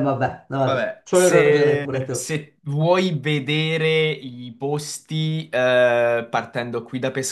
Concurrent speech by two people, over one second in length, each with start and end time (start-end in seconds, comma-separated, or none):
0.6-2.3